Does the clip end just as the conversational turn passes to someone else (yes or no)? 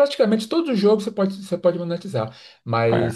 no